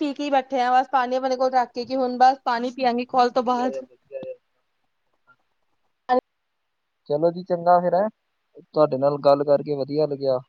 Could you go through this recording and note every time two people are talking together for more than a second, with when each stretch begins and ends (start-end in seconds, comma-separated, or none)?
none